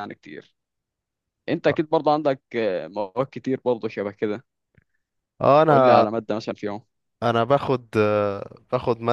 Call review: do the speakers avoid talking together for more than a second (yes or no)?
yes